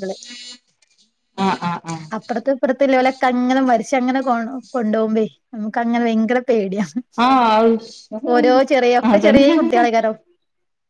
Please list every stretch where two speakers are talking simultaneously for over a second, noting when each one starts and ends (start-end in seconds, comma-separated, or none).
8.3-9.8